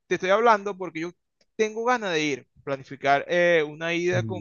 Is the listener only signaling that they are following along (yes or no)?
yes